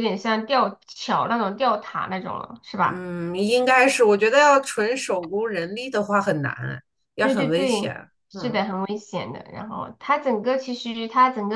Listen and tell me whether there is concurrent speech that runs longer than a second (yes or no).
yes